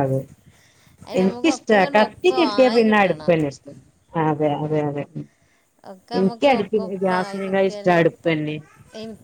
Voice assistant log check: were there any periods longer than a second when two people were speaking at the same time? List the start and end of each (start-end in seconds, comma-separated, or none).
1.2-3.3, 6.2-8.5